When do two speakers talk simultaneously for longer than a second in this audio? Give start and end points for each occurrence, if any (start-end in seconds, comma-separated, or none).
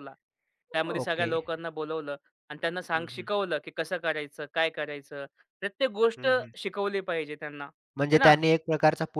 none